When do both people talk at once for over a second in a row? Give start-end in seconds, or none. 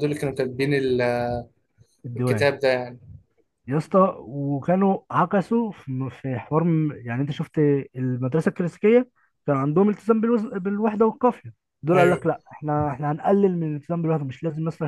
none